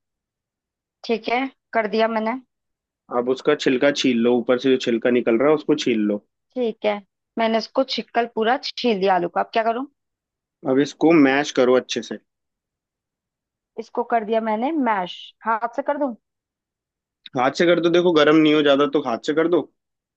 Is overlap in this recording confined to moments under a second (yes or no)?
yes